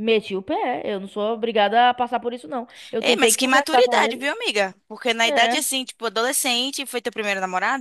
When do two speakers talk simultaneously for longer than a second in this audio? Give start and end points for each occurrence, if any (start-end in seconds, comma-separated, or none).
3.0-4.2